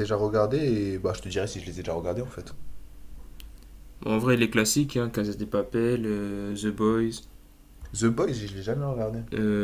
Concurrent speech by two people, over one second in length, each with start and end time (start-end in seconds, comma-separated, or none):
none